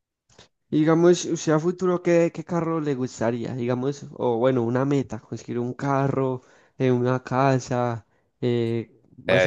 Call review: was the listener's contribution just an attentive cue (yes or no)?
no